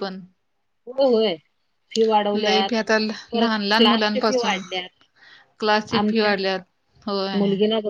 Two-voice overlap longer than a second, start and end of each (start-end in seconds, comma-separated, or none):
3.3-4.6